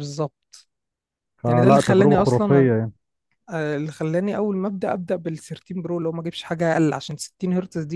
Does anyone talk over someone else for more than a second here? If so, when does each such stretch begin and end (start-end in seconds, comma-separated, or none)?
1.5-2.7